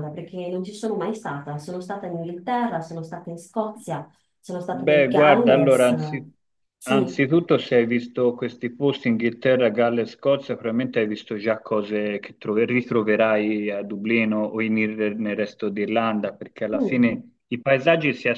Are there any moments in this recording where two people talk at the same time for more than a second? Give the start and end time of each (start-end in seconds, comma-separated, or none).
4.7-6.0